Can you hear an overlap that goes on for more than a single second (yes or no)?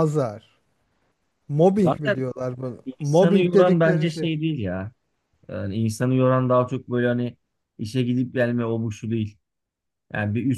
yes